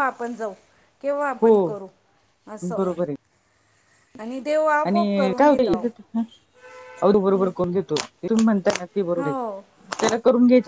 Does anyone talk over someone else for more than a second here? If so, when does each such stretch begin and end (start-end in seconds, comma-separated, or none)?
none